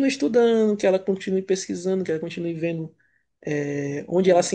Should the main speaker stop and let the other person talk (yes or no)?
no